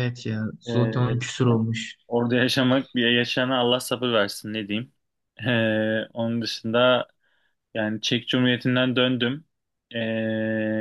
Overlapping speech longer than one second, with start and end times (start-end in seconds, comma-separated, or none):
none